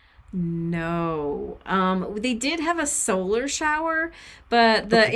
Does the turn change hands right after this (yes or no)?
no